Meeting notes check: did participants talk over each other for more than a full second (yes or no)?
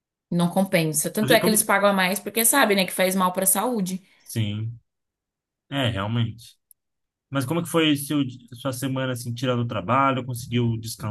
no